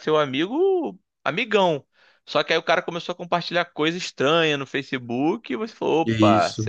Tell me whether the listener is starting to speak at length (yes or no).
no